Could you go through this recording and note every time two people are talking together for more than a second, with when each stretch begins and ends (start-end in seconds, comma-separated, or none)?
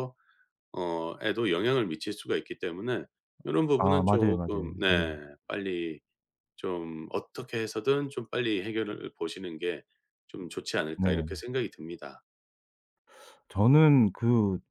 3.8-5.0